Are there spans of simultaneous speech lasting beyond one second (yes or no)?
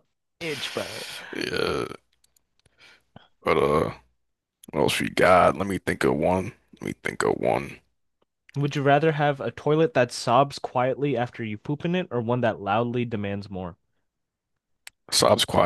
no